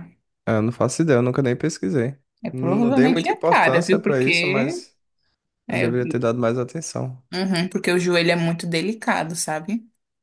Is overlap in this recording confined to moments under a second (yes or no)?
no